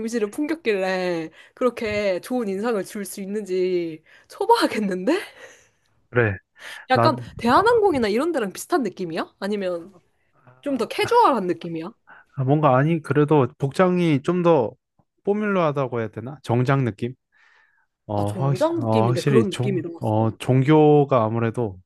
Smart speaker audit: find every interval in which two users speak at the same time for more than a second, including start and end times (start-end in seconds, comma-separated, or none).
18.1-20.3